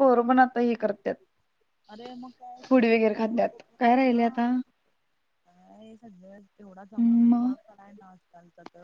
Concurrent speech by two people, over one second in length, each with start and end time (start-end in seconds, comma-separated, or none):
2.6-4.4